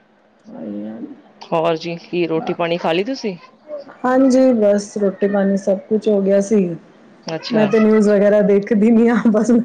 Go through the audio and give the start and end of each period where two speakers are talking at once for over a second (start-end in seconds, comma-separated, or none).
none